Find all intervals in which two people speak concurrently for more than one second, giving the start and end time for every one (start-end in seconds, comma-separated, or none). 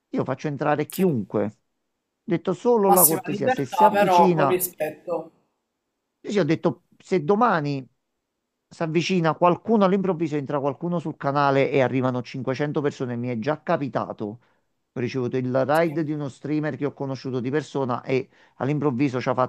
2.9-4.6